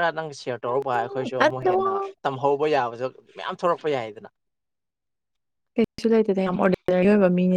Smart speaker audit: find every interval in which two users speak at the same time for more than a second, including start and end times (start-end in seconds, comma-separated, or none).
none